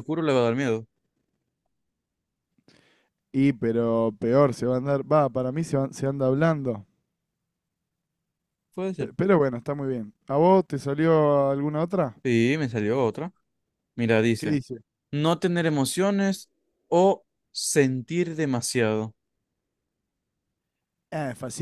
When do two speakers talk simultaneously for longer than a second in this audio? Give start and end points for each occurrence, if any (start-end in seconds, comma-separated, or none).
none